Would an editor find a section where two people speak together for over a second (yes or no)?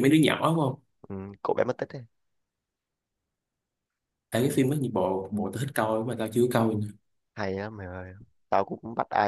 no